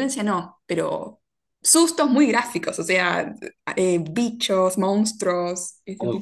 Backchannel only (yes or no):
no